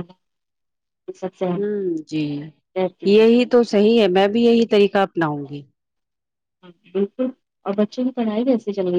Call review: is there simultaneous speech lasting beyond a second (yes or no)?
no